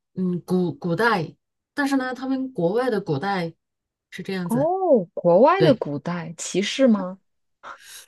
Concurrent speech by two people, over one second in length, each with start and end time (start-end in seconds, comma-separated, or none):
none